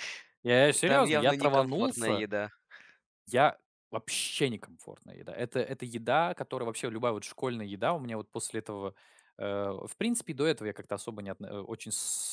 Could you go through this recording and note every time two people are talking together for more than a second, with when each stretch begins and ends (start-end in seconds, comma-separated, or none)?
0.8-2.2